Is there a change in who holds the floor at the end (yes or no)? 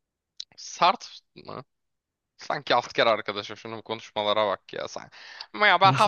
no